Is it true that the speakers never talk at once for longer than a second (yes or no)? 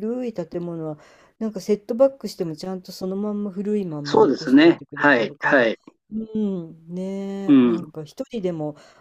no